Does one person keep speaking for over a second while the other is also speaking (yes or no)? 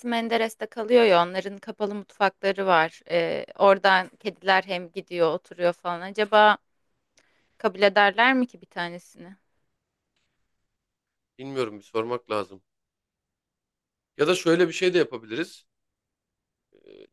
no